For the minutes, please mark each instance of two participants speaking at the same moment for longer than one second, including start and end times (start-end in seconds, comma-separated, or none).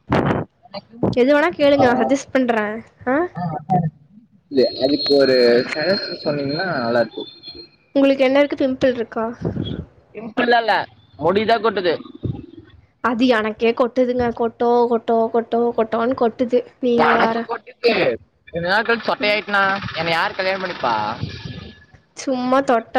none